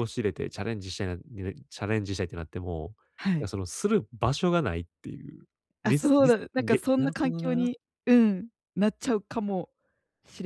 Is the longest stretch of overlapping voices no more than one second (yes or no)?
no